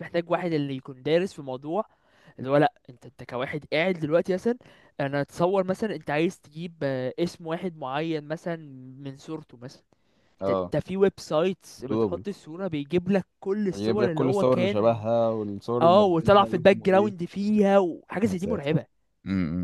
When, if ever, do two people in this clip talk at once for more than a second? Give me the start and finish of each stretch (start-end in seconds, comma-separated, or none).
13.7-15.0, 15.8-17.2